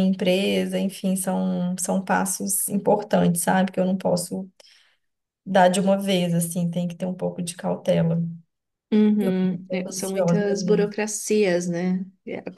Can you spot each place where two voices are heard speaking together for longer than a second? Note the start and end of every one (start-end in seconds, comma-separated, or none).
9.2-11.0